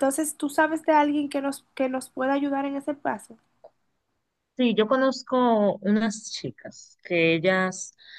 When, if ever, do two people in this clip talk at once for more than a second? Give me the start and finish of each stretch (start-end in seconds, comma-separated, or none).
none